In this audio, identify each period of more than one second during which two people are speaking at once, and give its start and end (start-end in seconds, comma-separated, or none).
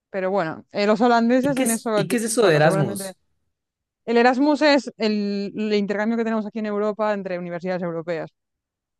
1.4-3.1